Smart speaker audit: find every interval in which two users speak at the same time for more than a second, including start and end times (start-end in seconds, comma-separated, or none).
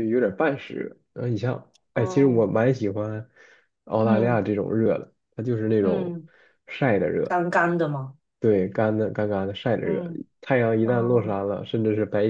none